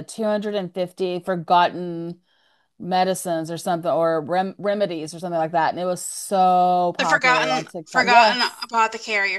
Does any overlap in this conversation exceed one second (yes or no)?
yes